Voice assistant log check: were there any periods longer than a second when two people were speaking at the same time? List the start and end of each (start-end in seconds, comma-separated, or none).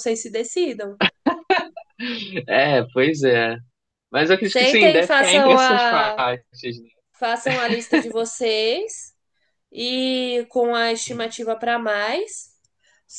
4.4-6.2